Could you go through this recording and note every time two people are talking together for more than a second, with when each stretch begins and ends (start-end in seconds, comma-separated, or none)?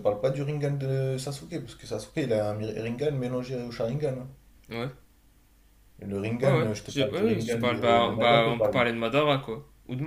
6.4-8.9